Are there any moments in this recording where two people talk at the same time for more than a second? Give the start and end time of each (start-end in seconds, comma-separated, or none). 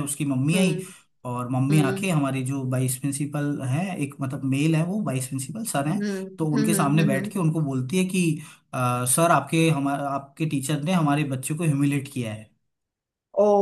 5.8-7.4